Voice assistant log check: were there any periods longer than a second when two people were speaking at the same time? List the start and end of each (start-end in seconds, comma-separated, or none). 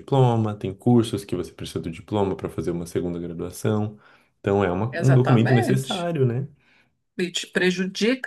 4.9-6.1